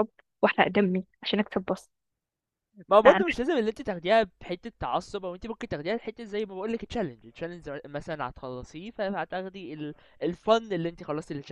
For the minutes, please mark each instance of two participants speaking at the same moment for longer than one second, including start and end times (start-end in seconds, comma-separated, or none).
none